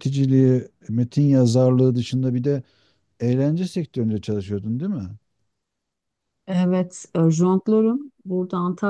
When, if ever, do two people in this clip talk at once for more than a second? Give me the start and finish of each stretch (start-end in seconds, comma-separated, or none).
none